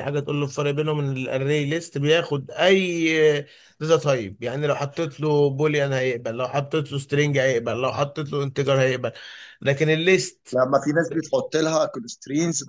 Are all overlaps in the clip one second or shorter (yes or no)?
yes